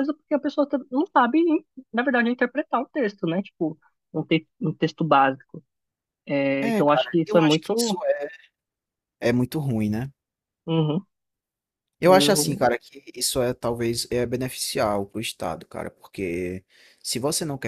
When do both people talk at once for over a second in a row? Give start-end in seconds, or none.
6.6-8.0